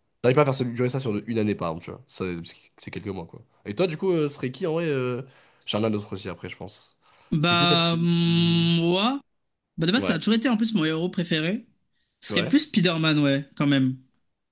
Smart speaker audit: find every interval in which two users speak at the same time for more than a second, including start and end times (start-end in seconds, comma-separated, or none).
7.4-8.7